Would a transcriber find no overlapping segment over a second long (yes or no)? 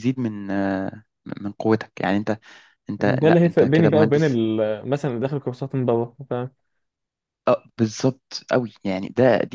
no